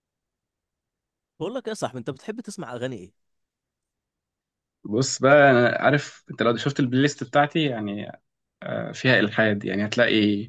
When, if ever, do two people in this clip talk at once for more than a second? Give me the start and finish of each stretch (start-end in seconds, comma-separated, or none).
none